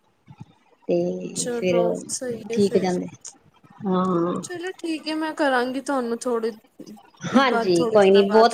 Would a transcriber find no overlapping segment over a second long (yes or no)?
yes